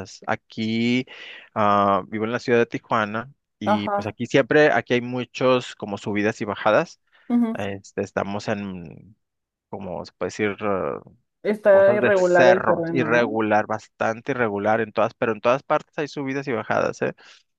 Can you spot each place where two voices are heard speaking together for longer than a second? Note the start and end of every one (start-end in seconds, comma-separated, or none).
11.7-13.3